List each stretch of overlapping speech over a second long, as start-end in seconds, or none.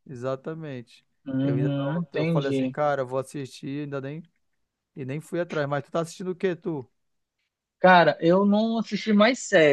1.4-2.8